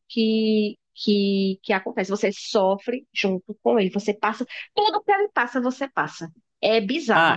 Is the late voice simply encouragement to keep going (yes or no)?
no